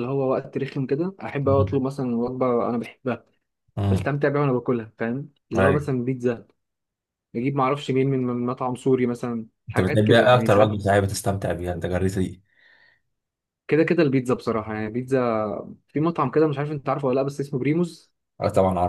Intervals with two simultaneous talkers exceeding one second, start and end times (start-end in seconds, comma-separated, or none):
9.7-10.9